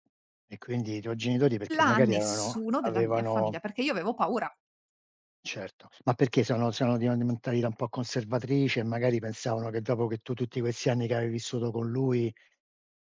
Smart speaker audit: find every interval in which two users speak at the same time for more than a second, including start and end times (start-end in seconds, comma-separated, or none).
1.7-3.6